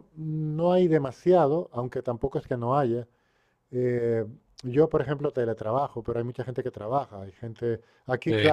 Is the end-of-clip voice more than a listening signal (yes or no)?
no